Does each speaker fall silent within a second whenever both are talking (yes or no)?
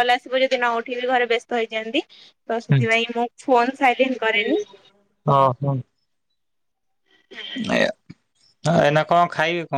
yes